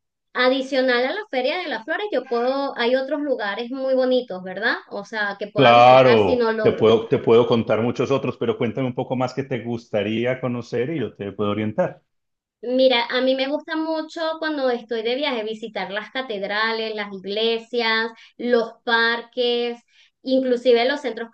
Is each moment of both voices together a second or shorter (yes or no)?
no